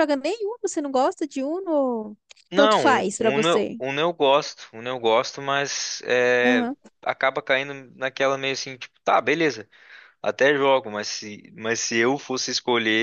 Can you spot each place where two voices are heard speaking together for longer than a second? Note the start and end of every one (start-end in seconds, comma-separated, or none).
2.5-3.8